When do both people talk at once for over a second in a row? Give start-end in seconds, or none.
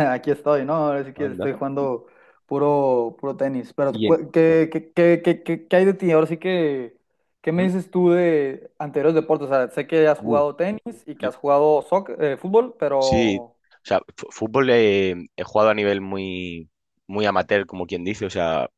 none